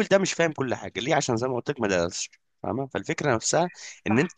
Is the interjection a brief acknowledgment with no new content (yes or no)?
yes